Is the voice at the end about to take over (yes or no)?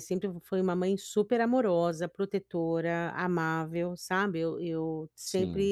no